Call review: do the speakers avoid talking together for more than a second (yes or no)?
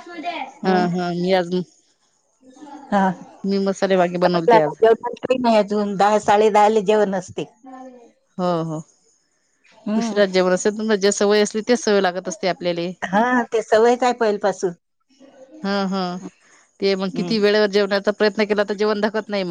no